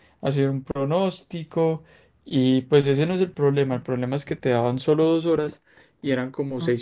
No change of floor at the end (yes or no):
yes